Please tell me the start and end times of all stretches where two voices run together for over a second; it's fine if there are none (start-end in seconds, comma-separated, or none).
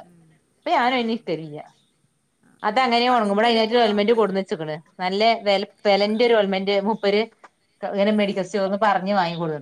2.7-4.3